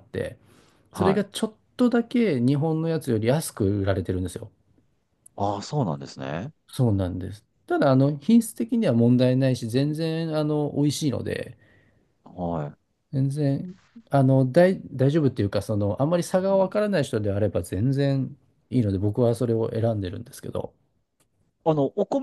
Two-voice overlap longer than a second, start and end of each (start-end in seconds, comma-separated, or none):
none